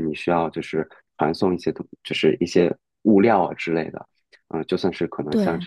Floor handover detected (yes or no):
no